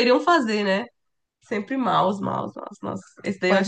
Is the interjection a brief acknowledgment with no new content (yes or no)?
no